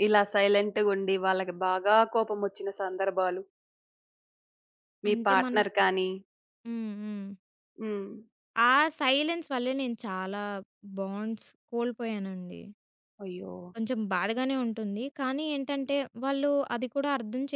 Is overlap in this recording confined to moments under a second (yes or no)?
yes